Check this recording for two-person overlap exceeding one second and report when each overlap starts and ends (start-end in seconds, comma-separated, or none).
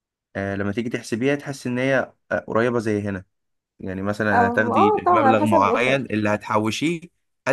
4.3-6.0